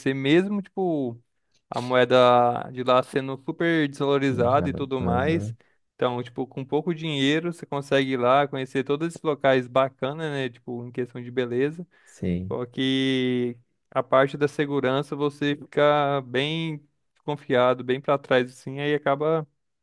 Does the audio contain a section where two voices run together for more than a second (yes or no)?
yes